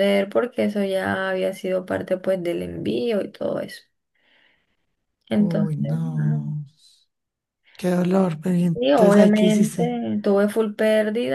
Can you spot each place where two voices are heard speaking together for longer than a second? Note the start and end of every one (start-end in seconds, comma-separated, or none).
8.7-10.0